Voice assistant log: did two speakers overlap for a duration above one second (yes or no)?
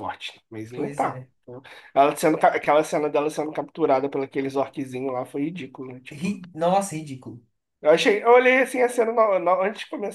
no